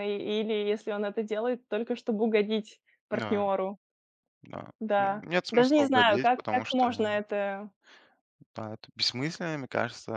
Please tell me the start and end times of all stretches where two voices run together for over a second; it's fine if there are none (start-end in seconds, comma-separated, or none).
4.8-6.9